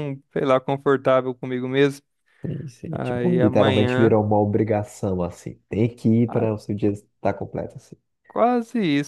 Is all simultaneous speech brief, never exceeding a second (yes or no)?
no